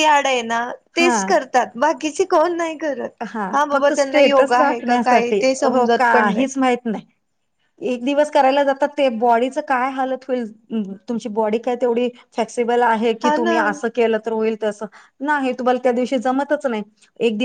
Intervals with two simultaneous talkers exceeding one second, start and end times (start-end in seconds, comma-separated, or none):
3.6-6.5